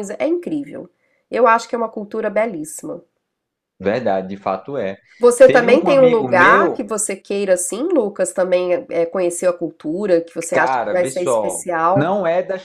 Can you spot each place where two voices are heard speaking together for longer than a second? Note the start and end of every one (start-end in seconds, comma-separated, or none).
5.5-6.8, 10.5-12.1